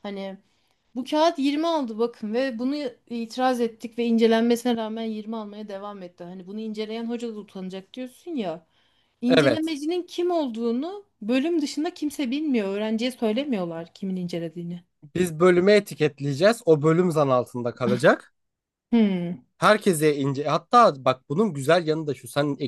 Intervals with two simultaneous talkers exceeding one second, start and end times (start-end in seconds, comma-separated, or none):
none